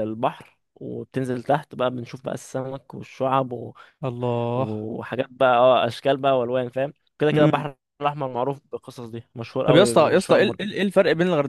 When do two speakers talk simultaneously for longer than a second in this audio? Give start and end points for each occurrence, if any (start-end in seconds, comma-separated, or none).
9.7-11.0